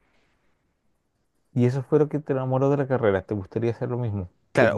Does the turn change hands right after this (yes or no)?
yes